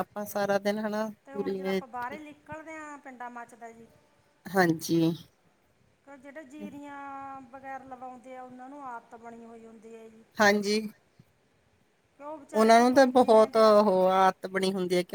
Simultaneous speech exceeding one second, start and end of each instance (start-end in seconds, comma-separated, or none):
12.5-13.8